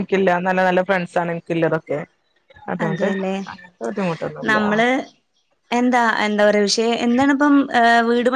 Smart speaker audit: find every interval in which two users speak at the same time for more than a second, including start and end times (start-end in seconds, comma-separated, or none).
none